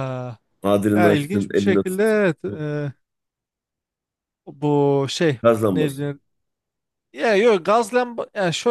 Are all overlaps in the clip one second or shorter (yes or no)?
no